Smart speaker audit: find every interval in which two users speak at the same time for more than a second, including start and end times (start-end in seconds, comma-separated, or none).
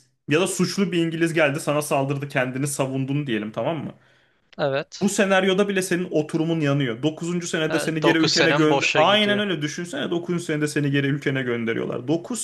8.0-9.4